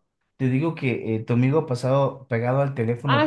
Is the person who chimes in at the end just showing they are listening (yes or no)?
no